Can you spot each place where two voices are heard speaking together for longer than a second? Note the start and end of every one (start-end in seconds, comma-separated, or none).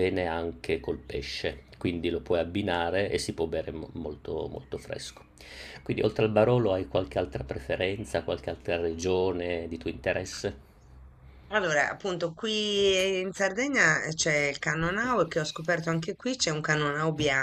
none